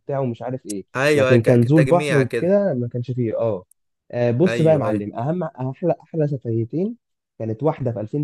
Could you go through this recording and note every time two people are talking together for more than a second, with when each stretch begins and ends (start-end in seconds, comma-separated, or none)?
0.9-2.5